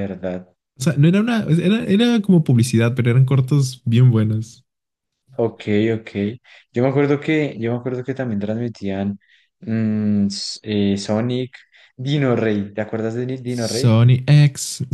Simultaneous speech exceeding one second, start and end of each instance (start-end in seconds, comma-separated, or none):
none